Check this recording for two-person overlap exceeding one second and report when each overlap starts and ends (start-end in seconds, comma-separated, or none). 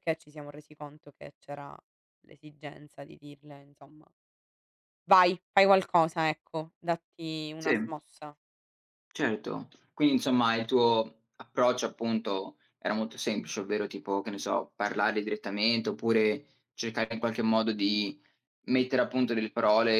none